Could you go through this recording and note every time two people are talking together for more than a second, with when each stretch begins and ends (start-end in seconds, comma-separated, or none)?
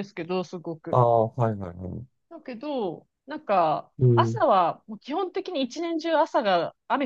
none